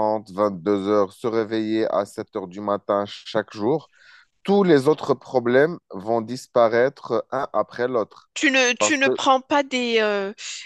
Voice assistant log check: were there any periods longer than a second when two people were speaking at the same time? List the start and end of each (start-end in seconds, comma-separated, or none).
none